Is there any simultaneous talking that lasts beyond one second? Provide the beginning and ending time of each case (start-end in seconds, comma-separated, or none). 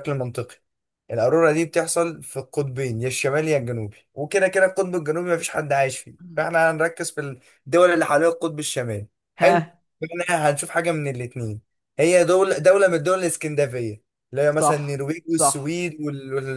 14.5-15.8